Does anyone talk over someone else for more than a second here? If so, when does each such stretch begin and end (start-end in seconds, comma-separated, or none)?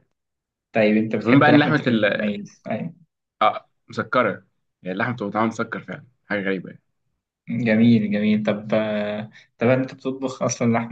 none